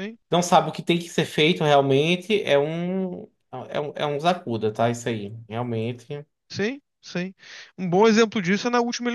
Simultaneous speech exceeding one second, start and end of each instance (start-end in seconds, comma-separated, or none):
none